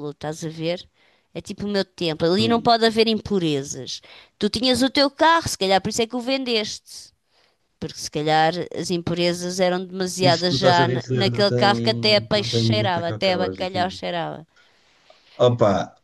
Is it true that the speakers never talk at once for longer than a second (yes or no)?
no